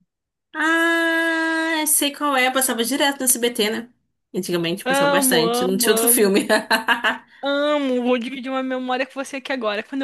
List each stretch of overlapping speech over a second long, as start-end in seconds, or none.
4.8-6.5